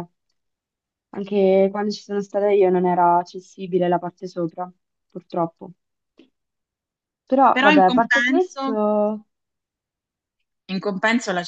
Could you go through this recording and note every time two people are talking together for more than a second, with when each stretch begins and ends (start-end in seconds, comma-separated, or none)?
7.5-8.7